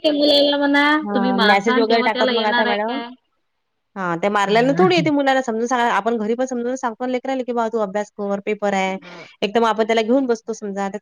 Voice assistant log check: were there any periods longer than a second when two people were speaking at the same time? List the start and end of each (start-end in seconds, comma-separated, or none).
1.1-3.0